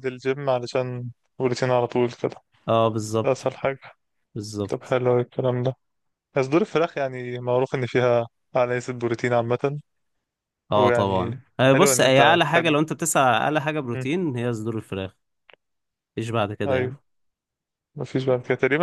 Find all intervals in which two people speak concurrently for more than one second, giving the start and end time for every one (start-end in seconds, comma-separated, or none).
10.8-12.8